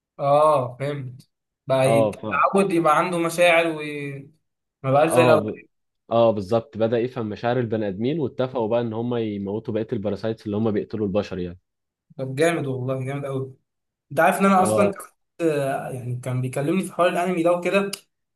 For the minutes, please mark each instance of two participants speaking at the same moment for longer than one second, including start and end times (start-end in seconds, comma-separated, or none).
none